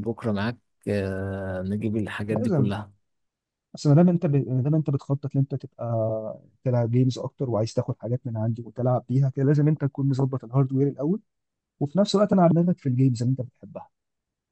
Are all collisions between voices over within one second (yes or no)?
yes